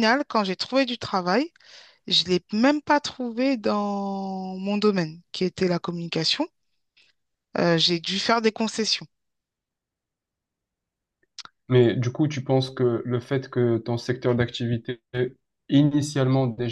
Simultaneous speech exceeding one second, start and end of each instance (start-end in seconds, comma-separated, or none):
none